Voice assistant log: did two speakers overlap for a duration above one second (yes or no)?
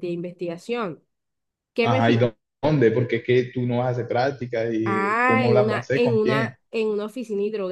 yes